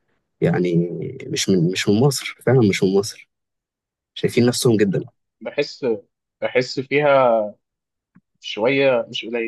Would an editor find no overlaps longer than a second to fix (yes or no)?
yes